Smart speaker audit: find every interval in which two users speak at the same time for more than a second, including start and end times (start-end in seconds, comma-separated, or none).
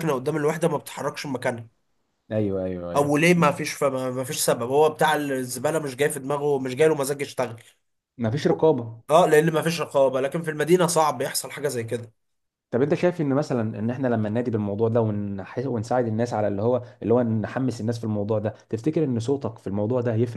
none